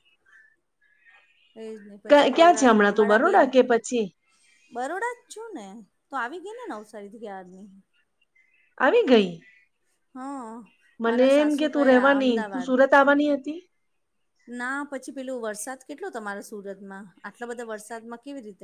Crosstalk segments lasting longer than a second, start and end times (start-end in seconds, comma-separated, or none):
2.1-3.4, 11.1-12.7